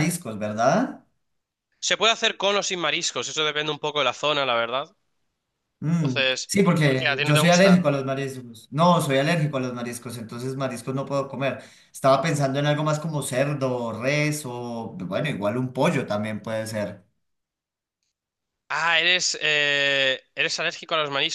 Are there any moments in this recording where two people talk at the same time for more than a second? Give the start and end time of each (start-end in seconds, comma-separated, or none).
5.9-7.9